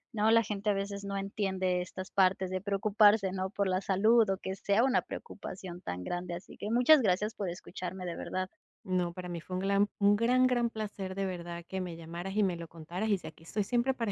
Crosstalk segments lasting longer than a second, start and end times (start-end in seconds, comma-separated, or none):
none